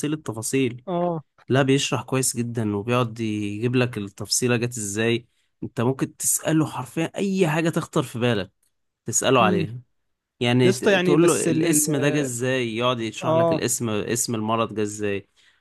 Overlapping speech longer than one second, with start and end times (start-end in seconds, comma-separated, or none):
10.6-11.9